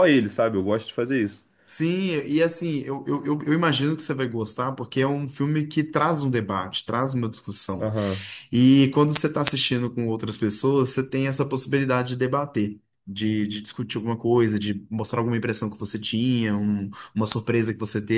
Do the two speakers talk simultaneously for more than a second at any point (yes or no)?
no